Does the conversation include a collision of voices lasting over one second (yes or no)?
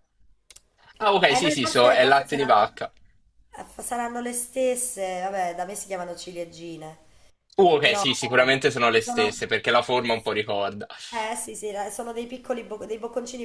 yes